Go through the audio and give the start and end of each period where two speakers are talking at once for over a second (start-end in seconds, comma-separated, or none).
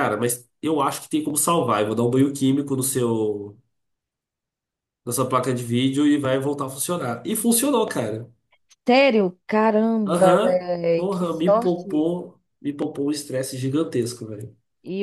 10.1-12.1